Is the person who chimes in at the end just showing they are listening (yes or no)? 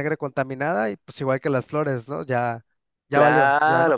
no